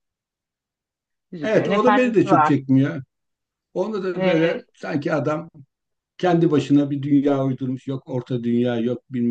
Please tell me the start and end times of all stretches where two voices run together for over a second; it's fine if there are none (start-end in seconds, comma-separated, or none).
1.4-2.6